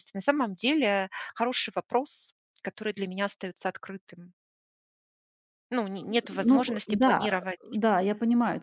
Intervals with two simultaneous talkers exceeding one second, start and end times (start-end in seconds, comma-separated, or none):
6.3-7.8